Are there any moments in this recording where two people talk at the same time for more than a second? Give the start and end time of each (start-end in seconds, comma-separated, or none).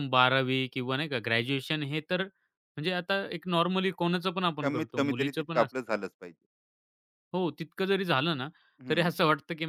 4.6-5.9